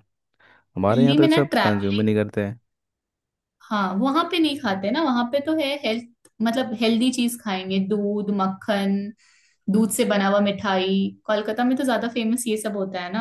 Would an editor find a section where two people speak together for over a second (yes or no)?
no